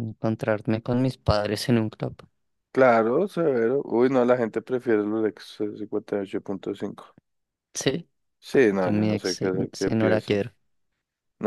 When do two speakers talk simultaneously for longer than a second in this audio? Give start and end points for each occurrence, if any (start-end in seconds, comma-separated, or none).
8.8-10.4